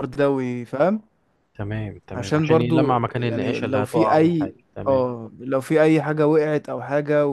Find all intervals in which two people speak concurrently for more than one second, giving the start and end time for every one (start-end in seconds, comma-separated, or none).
2.1-5.1